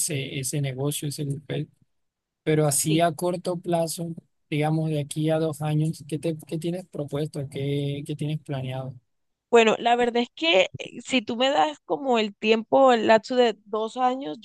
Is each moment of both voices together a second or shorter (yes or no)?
yes